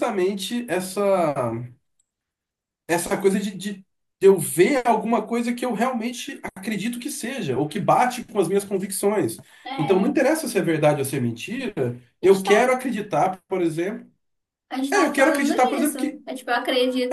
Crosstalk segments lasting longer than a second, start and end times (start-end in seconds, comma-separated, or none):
14.9-16.2